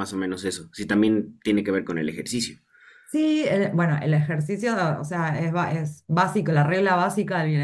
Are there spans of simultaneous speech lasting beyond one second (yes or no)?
no